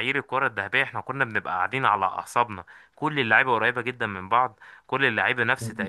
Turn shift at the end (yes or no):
no